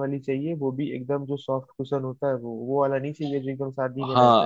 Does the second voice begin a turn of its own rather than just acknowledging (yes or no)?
yes